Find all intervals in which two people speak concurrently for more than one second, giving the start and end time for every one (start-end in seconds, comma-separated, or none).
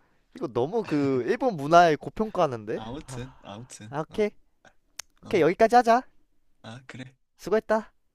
none